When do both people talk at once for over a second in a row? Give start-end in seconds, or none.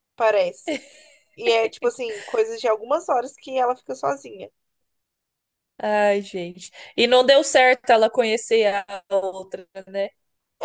none